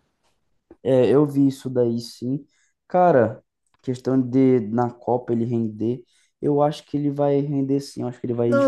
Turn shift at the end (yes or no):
yes